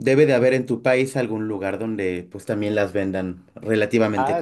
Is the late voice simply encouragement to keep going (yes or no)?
no